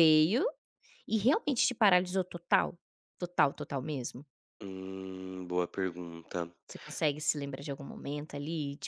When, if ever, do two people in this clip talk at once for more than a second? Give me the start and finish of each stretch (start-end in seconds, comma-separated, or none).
none